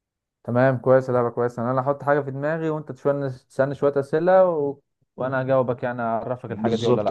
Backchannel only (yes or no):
no